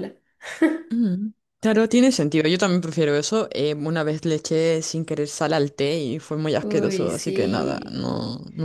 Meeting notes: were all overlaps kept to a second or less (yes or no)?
no